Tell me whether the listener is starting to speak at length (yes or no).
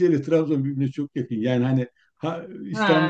no